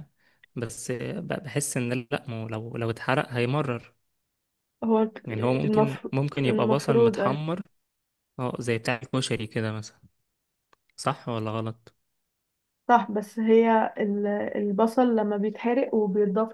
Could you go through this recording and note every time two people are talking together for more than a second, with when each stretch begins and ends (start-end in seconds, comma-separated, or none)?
5.7-7.4